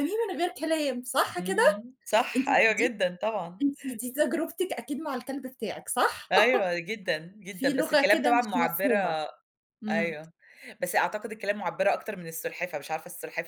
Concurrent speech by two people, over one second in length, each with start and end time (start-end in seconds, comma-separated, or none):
7.5-9.2